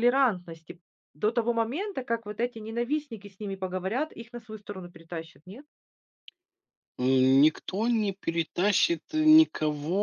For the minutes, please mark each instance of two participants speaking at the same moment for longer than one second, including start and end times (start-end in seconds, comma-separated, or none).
none